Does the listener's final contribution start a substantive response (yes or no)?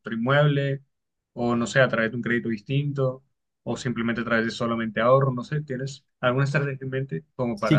yes